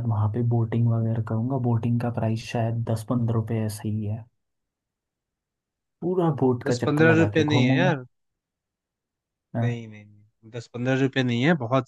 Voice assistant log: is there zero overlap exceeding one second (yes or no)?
no